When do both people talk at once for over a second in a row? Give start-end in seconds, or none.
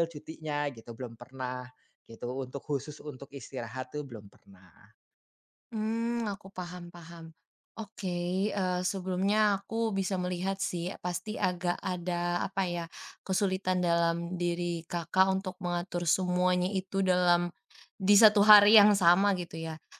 none